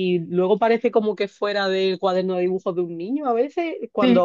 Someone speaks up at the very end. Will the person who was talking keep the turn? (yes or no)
yes